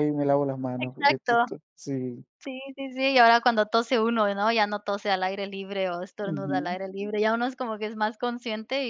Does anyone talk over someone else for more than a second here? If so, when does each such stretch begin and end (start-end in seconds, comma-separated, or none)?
none